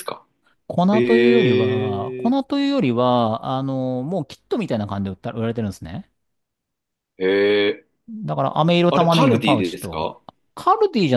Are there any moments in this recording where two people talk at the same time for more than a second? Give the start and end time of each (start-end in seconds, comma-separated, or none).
0.9-2.4, 8.9-10.1